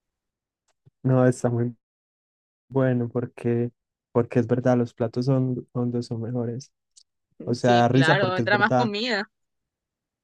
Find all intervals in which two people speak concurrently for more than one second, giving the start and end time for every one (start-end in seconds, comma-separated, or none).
7.6-8.9